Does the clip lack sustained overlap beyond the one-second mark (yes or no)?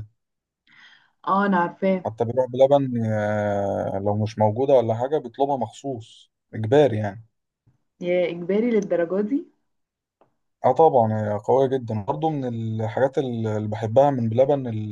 yes